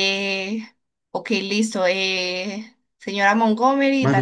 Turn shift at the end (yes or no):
no